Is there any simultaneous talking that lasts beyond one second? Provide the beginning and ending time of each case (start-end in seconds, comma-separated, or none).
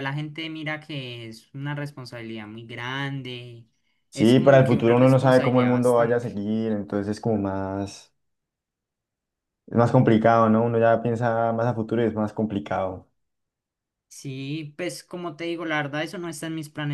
4.1-6.3